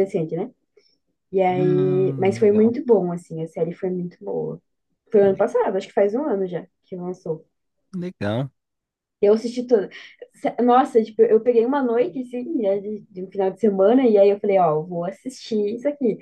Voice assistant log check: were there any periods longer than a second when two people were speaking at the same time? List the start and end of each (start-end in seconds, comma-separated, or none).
1.5-2.7